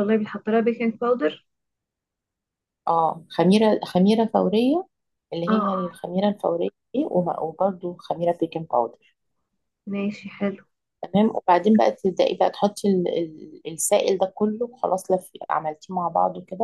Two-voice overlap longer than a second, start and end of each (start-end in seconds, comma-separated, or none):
none